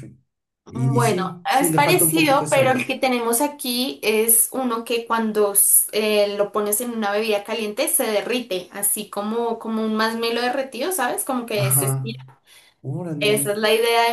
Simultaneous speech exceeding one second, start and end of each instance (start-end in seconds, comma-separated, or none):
0.7-2.8